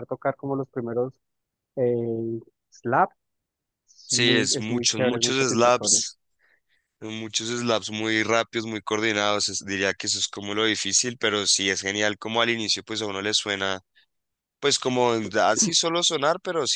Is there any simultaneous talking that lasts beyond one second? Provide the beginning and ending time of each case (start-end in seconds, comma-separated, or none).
4.0-6.0